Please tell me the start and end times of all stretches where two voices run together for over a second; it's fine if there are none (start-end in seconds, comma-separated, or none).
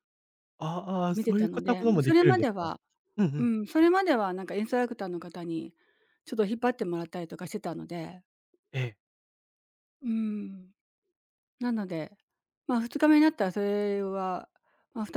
1.1-2.7